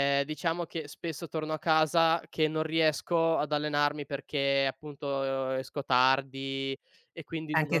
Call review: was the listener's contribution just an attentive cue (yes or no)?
no